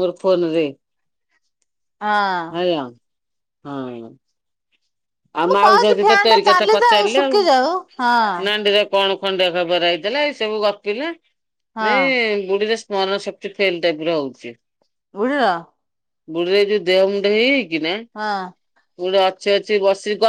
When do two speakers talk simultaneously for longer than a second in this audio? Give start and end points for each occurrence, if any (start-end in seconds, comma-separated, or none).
5.5-7.3